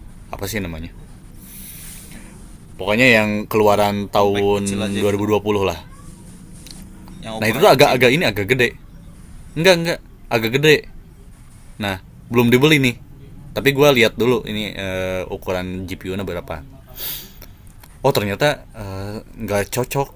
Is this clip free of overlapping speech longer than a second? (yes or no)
no